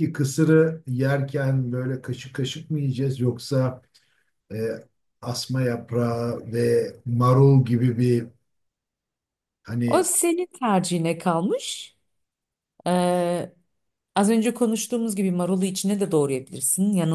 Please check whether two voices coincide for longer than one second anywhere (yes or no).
no